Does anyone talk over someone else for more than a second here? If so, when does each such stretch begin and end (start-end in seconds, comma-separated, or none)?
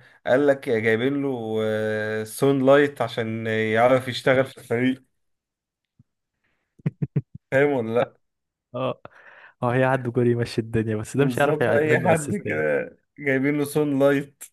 11.2-12.7